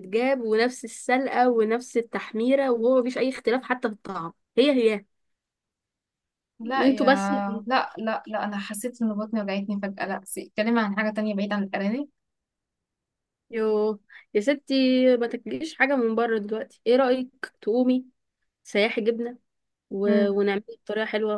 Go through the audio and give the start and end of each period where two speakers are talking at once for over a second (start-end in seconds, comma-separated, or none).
none